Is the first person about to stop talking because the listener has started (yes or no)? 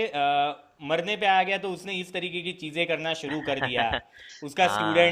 no